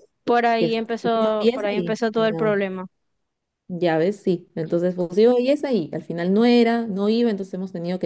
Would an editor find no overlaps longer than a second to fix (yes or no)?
no